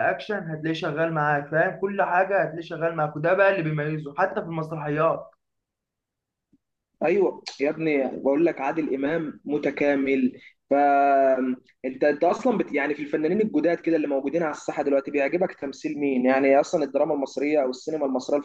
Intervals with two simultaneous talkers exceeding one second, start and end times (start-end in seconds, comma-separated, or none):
none